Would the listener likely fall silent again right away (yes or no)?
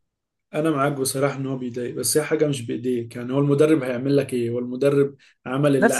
no